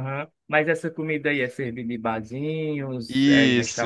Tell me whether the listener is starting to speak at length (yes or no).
yes